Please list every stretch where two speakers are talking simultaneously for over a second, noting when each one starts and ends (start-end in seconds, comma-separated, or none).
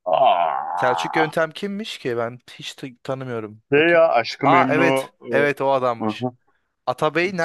3.7-6.3